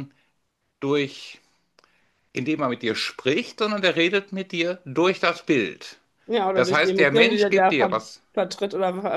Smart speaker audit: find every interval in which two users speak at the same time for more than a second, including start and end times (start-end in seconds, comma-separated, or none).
6.5-8.2